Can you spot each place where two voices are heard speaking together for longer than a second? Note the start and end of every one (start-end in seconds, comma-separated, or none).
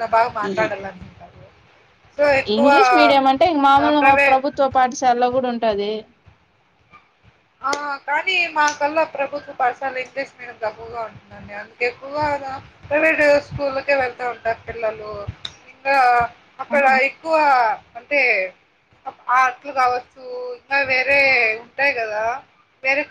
none